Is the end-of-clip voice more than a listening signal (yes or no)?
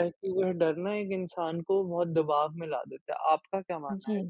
yes